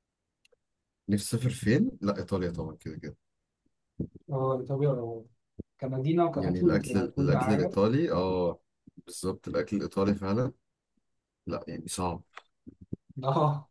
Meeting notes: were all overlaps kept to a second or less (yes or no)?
no